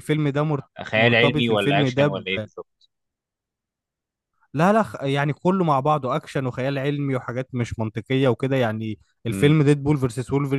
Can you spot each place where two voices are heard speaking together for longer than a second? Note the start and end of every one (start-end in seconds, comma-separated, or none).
0.8-2.1